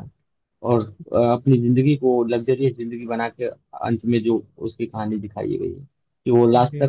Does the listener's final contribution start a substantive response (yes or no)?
no